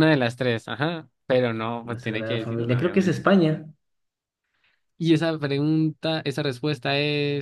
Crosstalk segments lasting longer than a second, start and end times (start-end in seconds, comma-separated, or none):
1.9-3.2